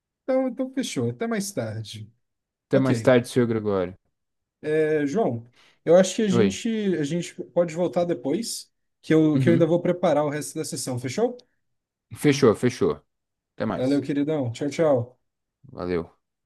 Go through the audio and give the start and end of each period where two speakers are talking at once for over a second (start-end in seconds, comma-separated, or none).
none